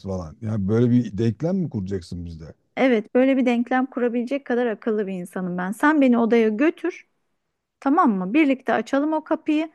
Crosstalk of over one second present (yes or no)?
no